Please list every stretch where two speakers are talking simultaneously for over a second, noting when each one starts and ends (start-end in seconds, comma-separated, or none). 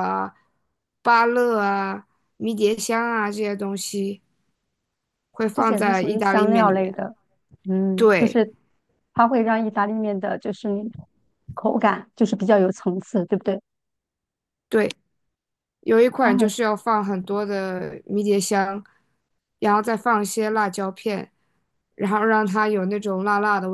5.5-7.0